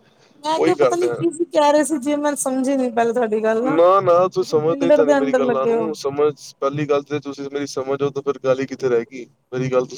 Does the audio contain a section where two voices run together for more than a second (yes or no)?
yes